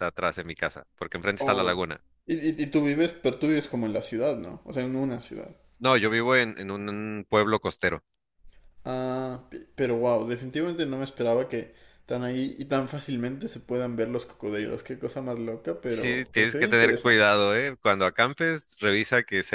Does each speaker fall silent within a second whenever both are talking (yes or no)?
no